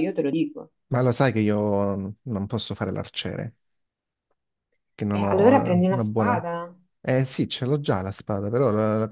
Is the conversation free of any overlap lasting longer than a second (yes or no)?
no